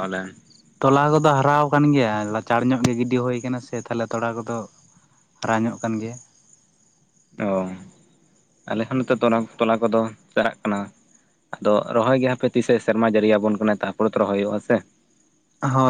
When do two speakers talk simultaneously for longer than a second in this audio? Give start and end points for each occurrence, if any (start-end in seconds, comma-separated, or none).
none